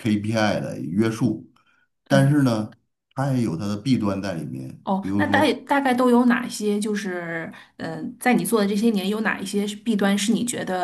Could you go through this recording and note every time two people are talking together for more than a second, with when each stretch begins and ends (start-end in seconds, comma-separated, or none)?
none